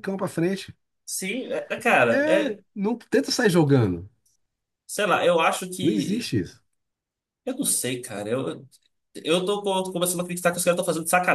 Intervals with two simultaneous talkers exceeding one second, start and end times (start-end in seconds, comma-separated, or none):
none